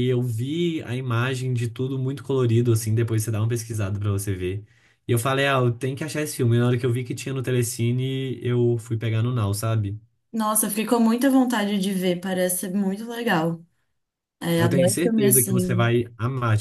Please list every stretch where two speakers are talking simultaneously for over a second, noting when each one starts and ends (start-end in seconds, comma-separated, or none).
14.6-15.9